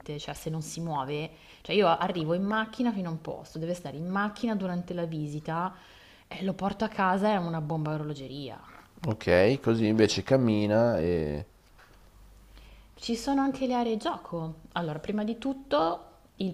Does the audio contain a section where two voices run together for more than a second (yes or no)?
no